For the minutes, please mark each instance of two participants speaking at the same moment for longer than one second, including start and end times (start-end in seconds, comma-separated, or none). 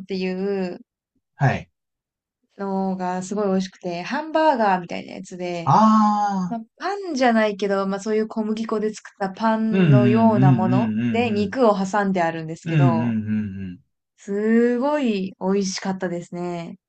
9.7-11.6